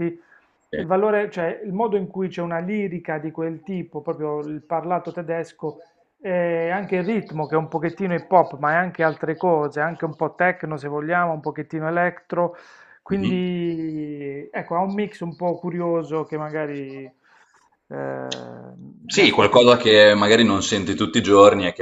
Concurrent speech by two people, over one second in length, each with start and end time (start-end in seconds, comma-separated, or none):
none